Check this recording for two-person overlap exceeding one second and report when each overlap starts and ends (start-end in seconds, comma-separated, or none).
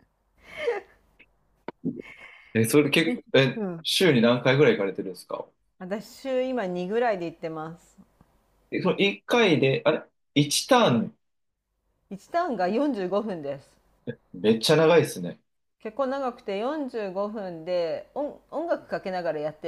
none